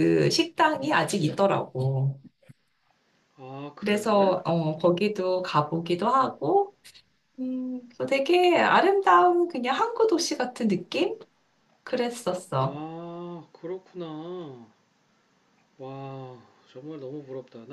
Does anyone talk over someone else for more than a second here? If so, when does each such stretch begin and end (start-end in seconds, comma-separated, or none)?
none